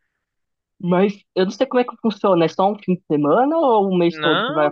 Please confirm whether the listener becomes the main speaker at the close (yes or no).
yes